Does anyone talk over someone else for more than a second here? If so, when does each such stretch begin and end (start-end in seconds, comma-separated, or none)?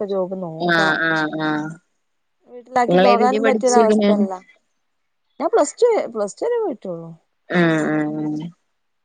2.9-4.1